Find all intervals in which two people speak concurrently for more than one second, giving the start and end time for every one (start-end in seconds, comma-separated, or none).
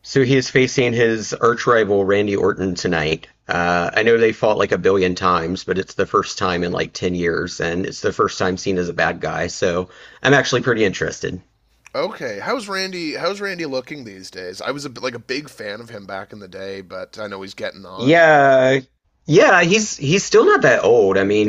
none